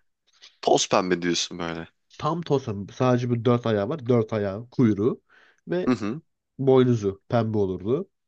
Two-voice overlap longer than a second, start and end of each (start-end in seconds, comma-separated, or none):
none